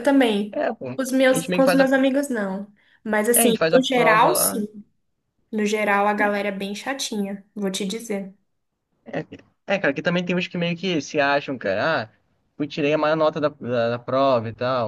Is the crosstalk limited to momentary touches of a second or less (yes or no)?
no